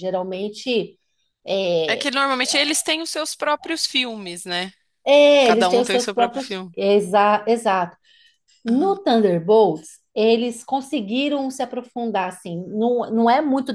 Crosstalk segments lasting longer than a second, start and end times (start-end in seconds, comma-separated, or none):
5.4-6.7